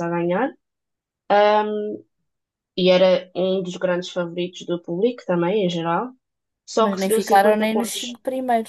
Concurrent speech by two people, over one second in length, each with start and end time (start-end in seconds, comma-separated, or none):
6.8-8.2